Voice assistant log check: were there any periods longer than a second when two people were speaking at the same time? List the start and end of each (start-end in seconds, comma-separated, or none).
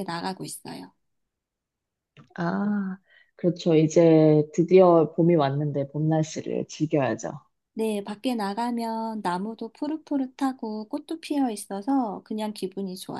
none